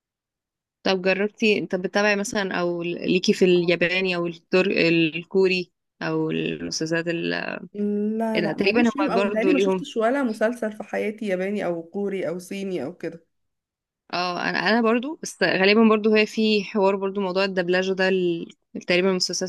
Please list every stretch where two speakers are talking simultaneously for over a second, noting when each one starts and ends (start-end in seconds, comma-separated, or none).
8.4-9.9